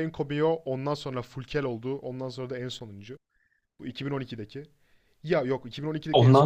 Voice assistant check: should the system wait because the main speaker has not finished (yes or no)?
yes